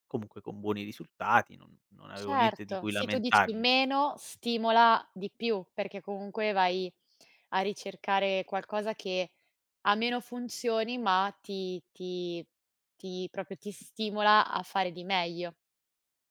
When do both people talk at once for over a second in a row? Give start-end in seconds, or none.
2.1-3.6